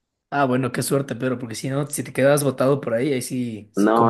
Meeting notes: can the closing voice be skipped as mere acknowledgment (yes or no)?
no